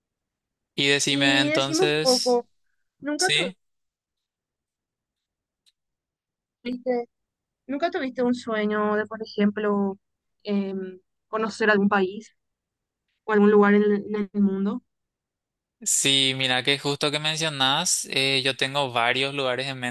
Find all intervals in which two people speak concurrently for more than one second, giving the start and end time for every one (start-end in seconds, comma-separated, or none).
1.1-2.4